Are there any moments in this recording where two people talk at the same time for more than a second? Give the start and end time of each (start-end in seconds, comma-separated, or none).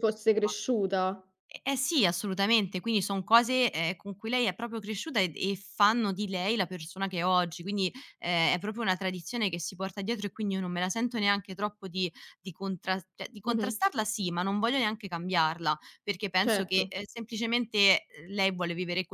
none